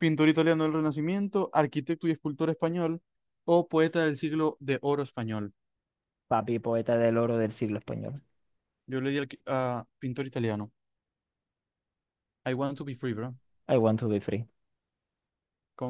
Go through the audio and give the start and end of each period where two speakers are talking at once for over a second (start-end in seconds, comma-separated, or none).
none